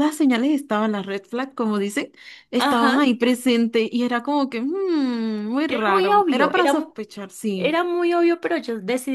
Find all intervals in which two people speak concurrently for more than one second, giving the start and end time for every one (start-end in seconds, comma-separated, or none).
5.7-7.0